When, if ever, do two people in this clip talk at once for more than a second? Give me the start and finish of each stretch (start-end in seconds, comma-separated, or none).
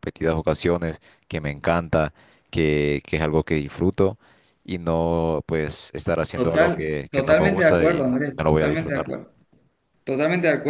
6.3-9.2